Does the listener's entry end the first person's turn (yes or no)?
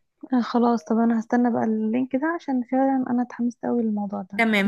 yes